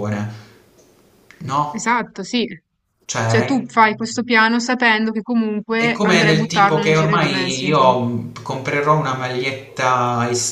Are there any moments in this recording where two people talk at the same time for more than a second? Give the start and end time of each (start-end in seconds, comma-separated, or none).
5.8-7.7